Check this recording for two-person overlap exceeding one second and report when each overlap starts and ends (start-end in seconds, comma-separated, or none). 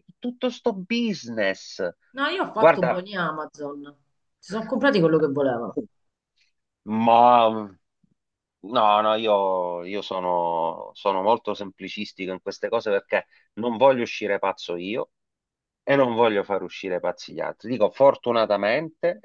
none